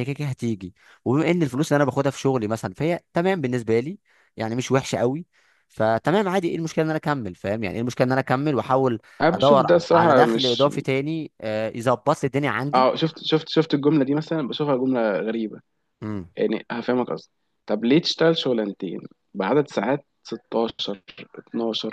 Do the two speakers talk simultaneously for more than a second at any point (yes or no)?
yes